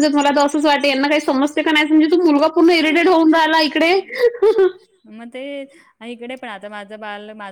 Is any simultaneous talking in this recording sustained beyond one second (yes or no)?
no